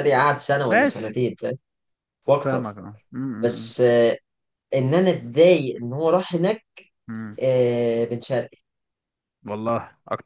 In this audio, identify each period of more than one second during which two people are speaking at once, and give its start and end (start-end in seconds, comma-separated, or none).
none